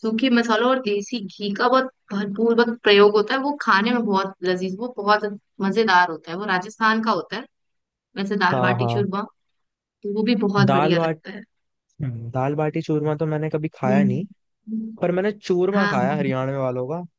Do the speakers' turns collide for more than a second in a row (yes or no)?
no